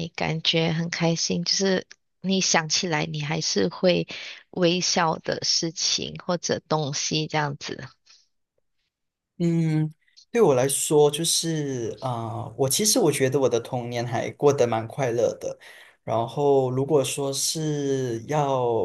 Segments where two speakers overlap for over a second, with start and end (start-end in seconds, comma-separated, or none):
none